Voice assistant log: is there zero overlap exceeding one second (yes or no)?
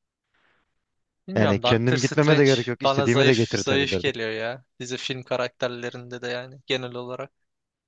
no